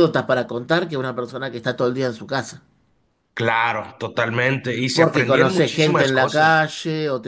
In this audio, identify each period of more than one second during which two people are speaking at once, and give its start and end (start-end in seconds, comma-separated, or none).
4.9-6.5